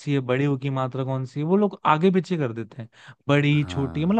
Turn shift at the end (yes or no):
no